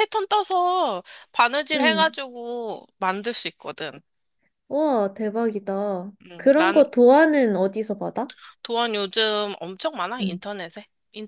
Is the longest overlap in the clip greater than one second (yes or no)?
no